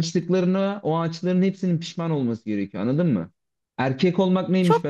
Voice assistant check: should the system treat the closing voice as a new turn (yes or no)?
no